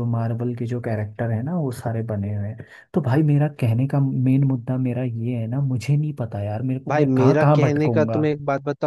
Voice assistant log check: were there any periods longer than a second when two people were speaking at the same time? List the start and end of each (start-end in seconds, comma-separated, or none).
6.9-8.2